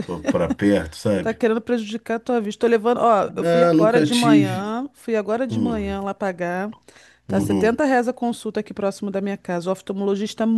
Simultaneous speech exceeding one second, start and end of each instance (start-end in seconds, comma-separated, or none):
3.3-4.8